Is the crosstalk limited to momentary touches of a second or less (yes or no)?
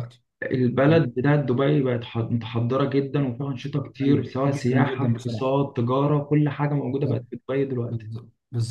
no